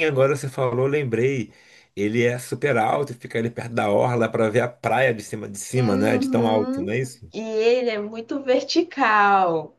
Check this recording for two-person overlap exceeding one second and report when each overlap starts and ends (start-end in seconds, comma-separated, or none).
5.8-7.0